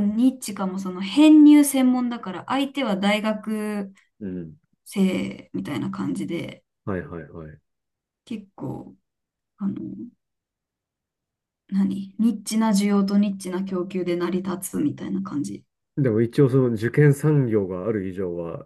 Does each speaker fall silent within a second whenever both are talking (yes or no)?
yes